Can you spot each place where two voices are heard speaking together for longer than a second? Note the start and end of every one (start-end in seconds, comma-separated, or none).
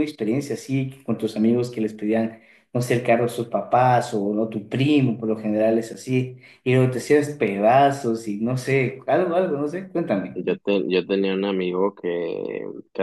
none